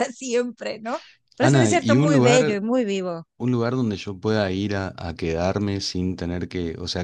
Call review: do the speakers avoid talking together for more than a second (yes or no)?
no